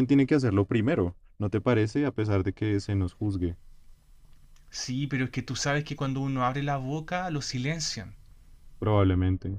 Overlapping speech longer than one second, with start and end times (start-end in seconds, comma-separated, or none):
none